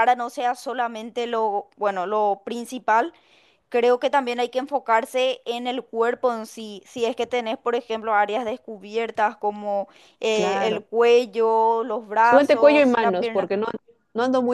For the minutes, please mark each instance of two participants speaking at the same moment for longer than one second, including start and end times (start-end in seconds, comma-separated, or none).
12.2-13.5